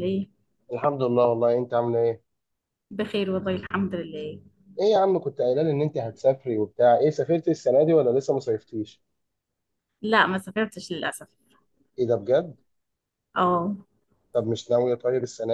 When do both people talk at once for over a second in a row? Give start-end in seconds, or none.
none